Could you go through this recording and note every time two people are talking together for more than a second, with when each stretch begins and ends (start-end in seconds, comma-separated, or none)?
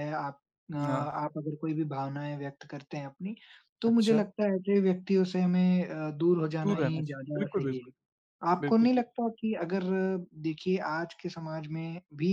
6.6-7.9